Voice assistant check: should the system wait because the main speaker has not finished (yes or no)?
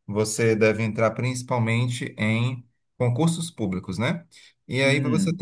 yes